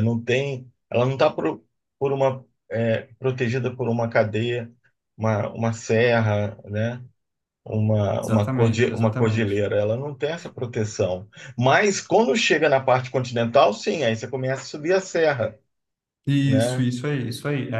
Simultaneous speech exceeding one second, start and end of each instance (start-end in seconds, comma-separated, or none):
8.2-9.6